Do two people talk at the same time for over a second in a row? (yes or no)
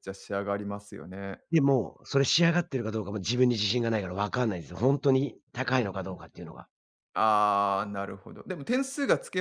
no